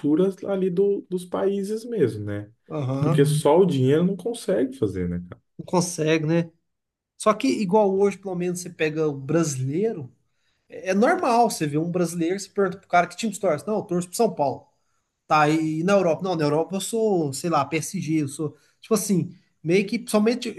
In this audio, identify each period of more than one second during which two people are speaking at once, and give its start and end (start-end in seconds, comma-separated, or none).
none